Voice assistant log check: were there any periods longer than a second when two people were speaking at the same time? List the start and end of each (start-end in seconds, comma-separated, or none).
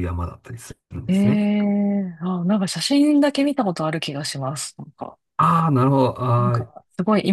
none